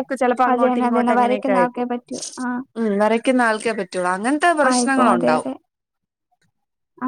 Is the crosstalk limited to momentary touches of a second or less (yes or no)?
no